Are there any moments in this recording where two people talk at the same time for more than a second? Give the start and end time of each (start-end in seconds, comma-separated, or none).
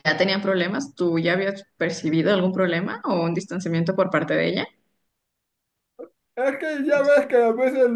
none